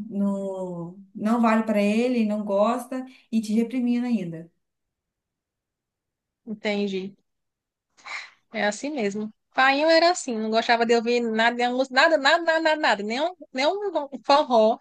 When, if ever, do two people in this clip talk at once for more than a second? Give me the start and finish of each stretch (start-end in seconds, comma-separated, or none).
none